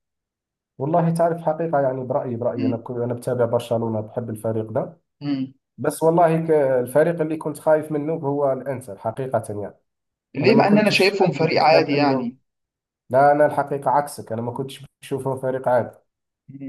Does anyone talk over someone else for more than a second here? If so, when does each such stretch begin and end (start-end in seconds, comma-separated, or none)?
10.4-12.3